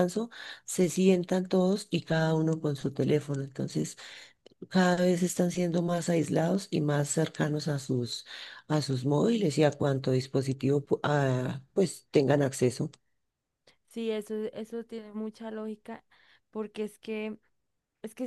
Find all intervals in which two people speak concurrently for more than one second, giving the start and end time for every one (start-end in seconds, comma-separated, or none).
none